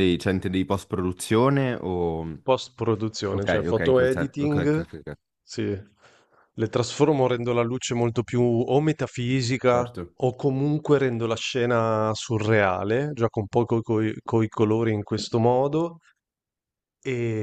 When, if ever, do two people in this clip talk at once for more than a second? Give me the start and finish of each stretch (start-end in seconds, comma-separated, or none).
3.3-4.8